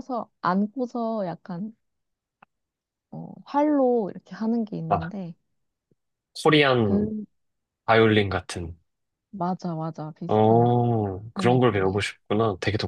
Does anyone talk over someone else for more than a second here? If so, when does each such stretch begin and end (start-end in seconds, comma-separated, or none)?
10.3-12.0